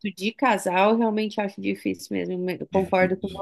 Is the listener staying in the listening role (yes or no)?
no